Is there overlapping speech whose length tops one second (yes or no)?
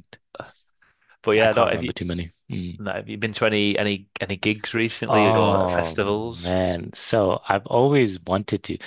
yes